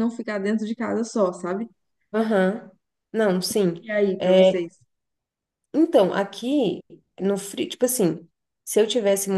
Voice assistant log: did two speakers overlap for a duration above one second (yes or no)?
no